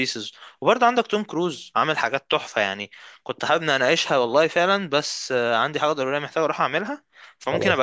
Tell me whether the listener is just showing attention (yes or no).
yes